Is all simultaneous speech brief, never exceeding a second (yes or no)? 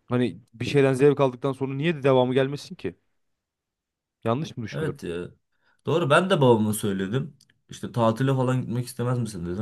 yes